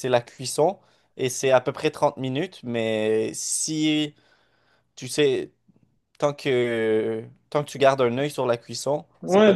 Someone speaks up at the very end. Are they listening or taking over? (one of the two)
taking over